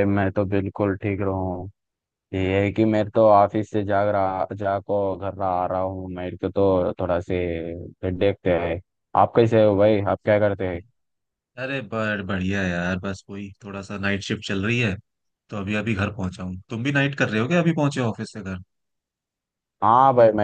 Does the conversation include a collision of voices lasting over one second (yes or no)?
no